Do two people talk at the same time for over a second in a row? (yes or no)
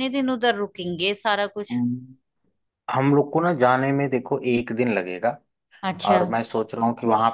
no